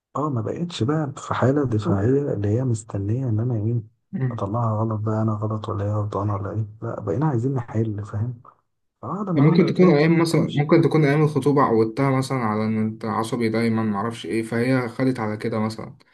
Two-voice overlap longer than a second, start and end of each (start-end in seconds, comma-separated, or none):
9.4-10.7